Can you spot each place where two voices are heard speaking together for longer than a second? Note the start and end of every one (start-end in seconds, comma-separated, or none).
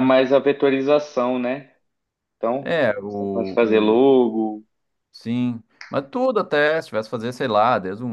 2.6-4.1